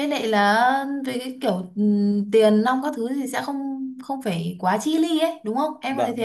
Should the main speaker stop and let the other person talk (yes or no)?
yes